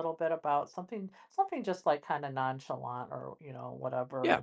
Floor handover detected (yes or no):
no